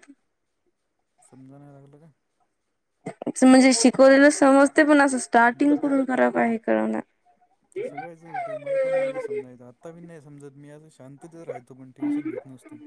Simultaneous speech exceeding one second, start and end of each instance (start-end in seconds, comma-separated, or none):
none